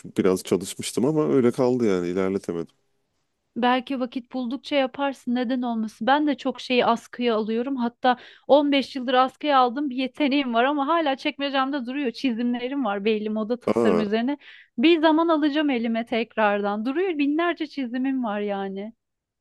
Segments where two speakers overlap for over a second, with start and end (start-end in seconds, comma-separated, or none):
none